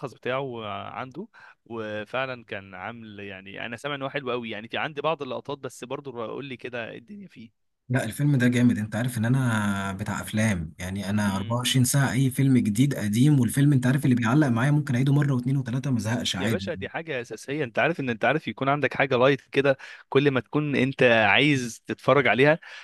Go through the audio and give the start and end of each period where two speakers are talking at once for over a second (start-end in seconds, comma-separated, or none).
none